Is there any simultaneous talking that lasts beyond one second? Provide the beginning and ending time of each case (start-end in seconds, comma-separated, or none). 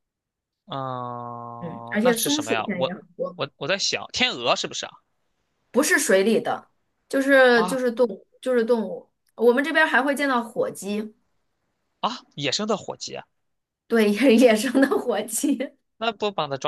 1.6-3.4